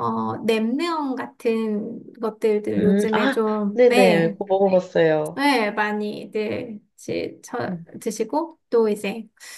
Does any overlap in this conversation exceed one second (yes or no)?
yes